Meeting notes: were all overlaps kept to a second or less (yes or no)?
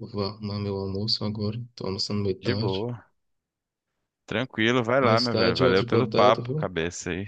no